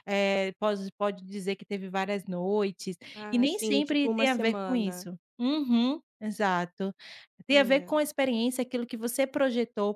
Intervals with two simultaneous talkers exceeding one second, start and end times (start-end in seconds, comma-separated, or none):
3.3-5.1